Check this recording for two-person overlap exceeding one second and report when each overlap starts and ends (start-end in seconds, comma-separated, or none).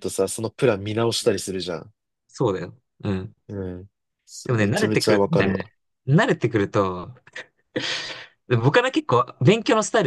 4.5-5.7